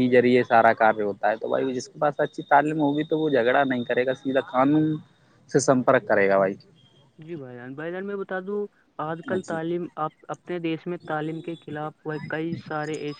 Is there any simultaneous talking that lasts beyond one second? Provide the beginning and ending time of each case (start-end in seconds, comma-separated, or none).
none